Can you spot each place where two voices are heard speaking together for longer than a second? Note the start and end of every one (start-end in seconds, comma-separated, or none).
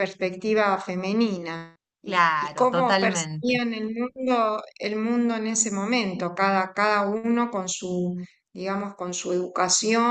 2.0-3.6